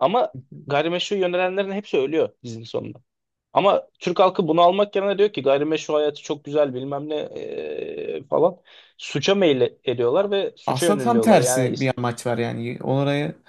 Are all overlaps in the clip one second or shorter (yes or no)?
no